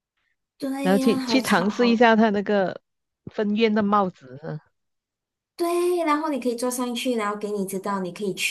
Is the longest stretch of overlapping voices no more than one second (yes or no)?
no